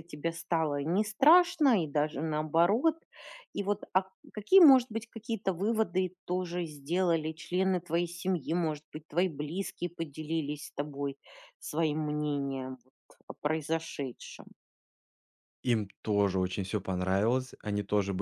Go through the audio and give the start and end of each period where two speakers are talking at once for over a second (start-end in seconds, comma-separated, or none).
none